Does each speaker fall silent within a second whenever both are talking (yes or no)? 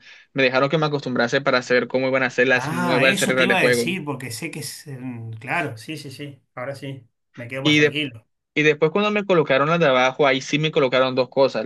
no